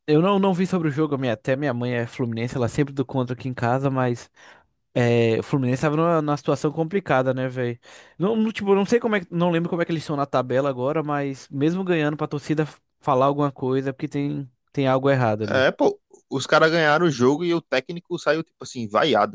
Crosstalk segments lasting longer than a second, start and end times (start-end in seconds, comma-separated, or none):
none